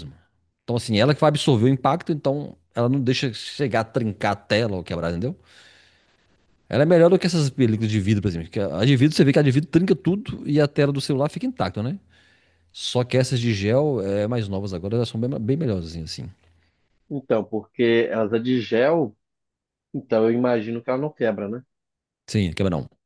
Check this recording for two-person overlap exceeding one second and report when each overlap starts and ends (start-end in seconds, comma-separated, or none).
none